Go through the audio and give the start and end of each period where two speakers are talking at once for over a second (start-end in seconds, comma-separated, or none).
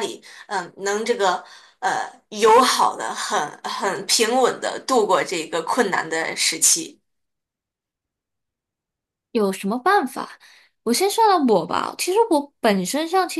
none